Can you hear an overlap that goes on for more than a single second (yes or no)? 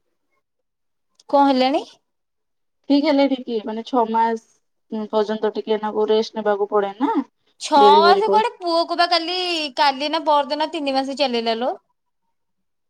no